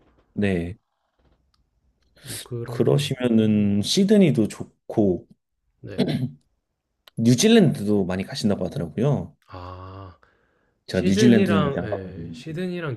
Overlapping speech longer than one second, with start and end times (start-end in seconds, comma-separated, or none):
10.9-12.5